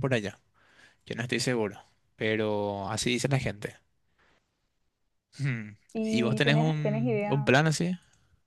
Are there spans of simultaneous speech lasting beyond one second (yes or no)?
yes